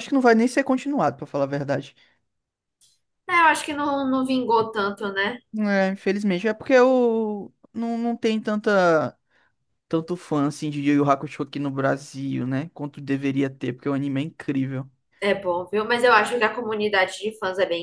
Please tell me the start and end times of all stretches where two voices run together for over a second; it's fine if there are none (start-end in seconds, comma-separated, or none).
none